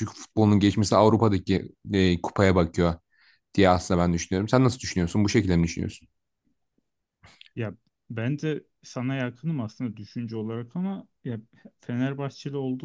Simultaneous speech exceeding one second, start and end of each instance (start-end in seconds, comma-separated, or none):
none